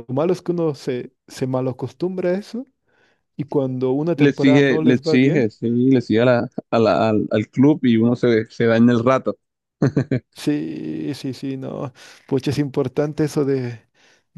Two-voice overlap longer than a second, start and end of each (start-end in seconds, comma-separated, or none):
4.2-5.4